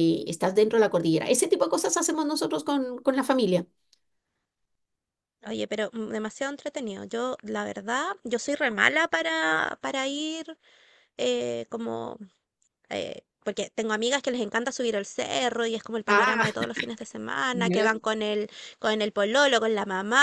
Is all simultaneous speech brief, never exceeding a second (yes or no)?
yes